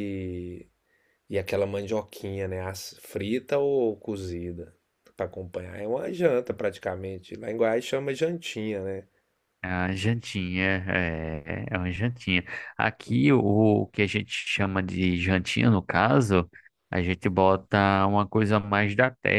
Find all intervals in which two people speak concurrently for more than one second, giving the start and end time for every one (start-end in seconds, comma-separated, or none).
none